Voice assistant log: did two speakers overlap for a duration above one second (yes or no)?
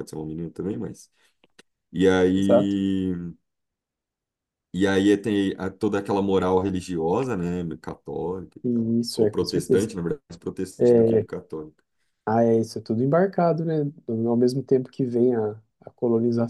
yes